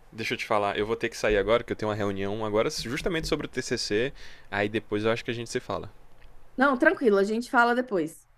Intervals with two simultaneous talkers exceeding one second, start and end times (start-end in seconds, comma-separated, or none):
none